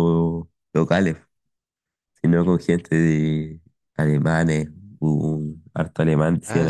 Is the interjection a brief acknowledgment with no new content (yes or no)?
no